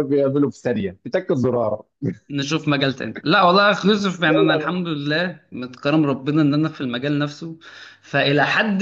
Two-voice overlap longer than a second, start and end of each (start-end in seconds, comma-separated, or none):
none